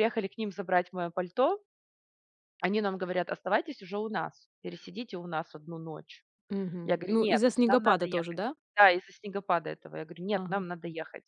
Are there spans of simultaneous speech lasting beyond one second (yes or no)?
yes